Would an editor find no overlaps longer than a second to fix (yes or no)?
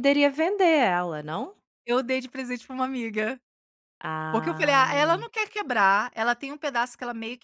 yes